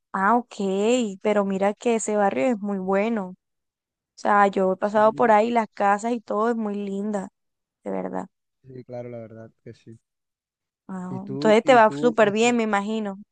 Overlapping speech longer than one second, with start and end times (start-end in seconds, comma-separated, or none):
11.1-12.6